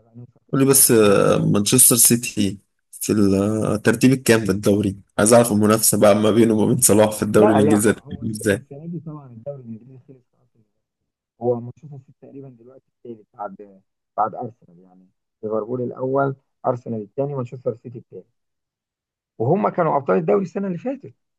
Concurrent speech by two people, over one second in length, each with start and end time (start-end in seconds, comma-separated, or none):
7.3-8.6